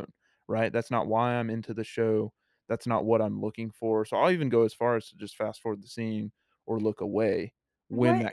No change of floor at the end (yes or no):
no